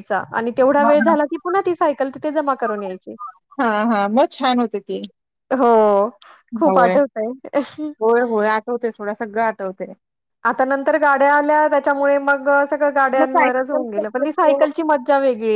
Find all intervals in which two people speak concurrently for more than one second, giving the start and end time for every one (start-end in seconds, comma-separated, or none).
13.2-14.6